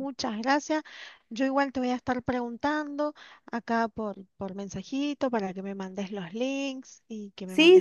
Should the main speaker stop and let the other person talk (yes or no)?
yes